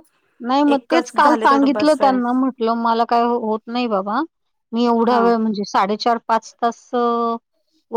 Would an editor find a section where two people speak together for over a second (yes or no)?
yes